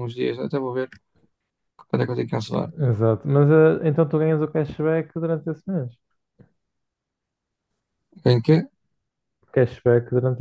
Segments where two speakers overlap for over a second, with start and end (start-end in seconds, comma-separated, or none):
none